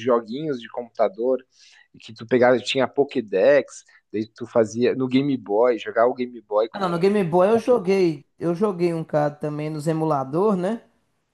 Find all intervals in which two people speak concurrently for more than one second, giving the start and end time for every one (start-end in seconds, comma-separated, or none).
6.7-8.0